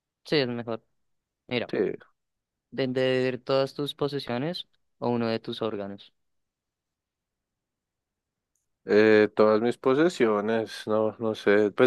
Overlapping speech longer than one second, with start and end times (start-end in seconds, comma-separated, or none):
none